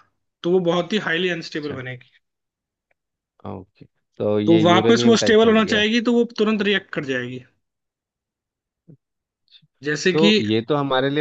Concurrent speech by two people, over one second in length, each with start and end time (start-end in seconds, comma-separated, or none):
4.5-5.8